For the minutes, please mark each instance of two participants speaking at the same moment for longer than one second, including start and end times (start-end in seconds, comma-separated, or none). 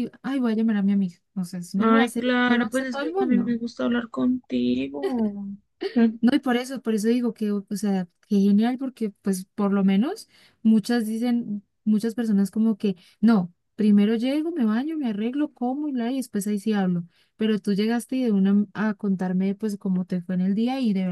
1.8-3.6